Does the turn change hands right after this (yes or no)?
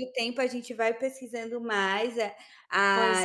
no